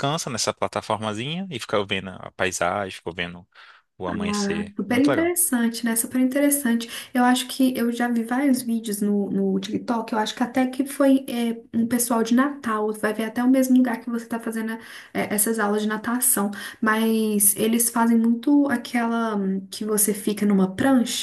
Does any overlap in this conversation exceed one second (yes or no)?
no